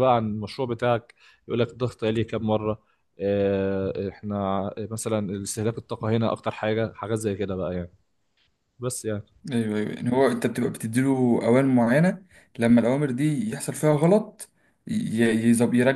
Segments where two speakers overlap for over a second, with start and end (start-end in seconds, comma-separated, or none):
none